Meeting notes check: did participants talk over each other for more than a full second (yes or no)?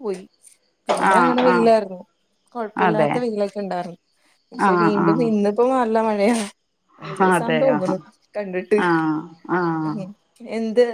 no